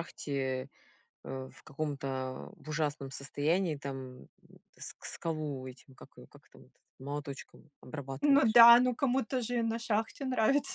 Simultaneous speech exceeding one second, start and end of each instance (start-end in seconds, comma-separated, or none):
none